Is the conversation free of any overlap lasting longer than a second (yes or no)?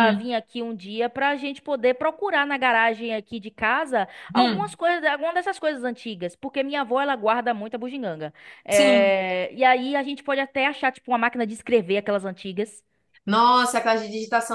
yes